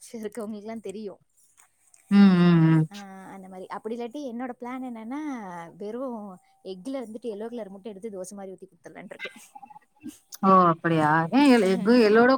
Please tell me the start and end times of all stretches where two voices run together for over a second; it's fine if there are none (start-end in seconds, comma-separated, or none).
none